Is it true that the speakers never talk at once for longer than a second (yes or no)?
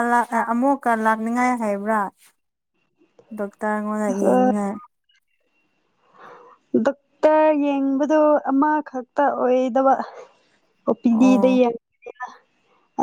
yes